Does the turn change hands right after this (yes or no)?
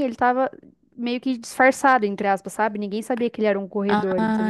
yes